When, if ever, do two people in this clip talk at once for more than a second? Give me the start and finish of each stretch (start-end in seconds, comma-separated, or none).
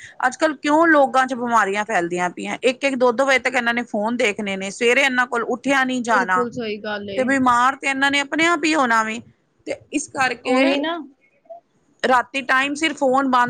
none